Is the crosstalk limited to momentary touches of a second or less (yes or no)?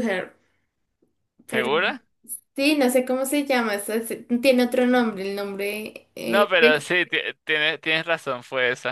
yes